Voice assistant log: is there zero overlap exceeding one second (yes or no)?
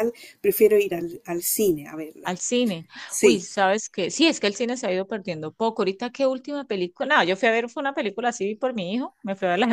yes